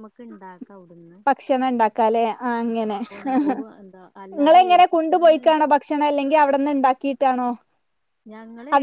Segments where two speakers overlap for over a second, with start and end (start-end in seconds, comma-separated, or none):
4.3-5.7